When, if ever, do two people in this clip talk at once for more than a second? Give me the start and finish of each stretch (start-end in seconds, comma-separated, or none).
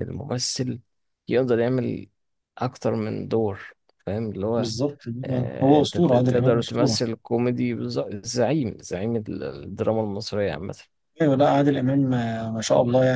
5.6-7.0